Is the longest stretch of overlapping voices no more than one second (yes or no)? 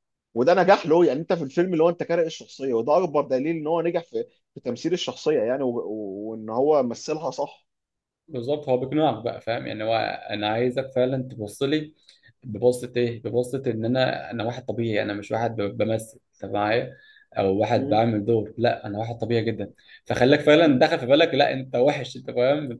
yes